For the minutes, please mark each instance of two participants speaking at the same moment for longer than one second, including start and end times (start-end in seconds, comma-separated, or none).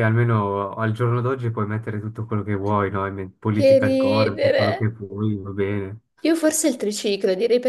3.5-4.8